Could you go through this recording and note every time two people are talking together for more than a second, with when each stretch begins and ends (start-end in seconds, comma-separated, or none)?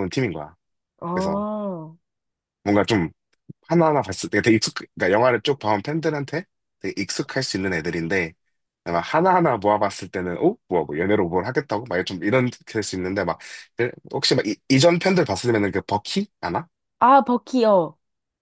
none